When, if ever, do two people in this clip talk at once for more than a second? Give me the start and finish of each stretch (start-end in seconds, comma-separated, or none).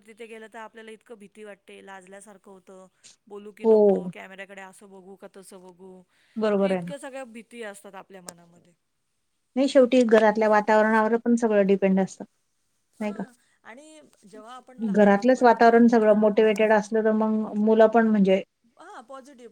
14.9-16.3